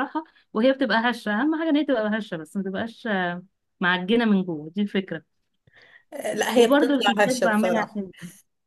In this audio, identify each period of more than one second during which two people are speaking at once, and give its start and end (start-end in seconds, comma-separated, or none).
6.5-8.0